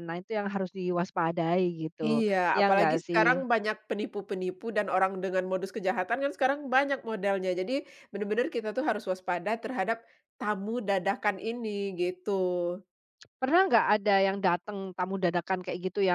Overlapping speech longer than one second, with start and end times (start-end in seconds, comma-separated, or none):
2.0-3.4